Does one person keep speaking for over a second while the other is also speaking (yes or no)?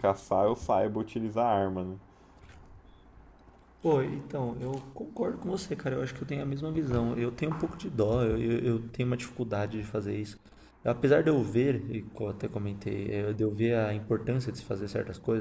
no